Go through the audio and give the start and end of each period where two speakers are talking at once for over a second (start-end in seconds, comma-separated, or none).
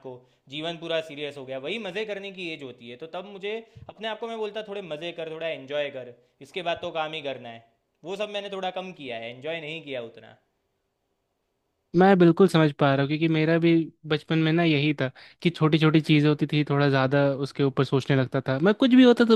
none